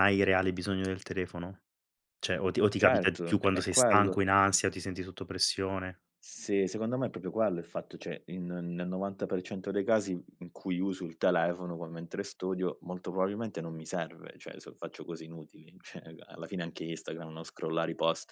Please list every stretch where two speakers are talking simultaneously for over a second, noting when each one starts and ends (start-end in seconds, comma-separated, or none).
2.8-4.2